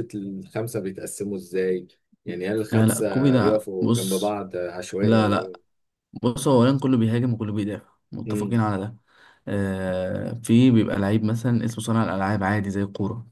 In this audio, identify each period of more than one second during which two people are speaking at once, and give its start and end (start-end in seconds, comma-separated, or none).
2.7-4.4